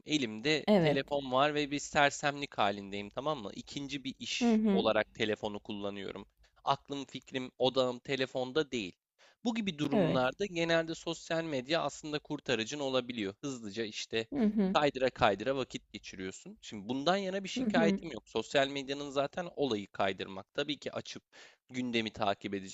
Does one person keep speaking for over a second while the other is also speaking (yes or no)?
no